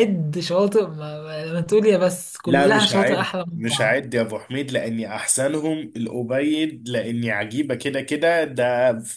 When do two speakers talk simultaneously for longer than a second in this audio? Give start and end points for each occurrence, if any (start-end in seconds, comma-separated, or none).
2.5-4.0